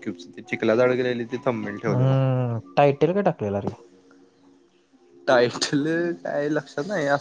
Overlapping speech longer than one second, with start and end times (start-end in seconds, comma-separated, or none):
none